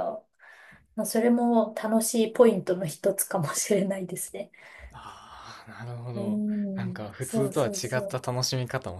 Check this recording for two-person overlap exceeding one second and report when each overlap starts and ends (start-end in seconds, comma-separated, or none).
6.2-8.2